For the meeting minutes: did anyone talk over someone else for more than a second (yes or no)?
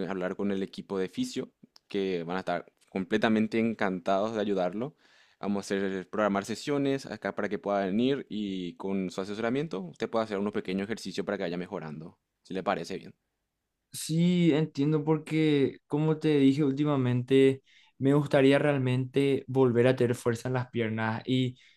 no